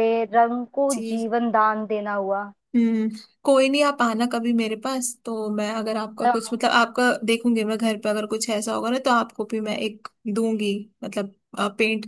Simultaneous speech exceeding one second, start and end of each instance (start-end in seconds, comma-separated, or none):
none